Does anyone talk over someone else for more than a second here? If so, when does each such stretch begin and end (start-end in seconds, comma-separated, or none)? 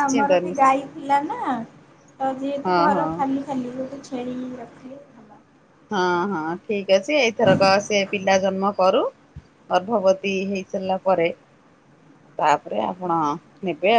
none